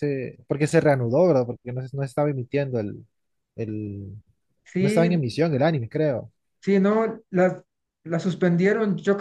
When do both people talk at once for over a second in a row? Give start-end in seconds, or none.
none